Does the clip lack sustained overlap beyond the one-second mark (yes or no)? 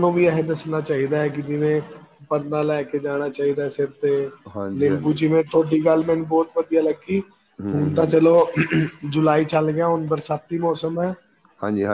yes